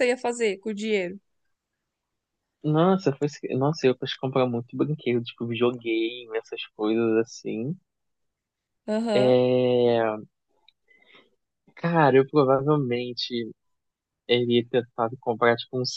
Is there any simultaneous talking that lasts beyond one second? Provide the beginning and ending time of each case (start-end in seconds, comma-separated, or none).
none